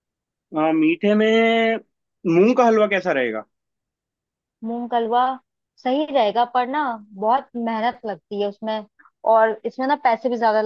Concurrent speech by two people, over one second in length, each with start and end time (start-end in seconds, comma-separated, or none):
none